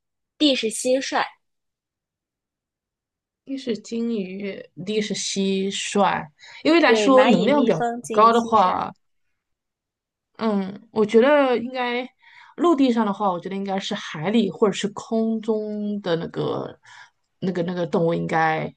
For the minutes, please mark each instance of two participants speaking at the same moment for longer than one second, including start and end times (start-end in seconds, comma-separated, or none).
6.8-8.8